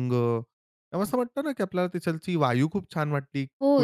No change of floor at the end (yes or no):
no